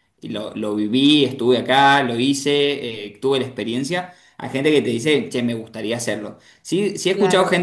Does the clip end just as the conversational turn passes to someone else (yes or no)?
no